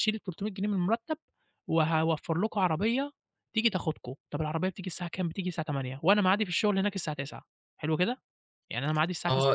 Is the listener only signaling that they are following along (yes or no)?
no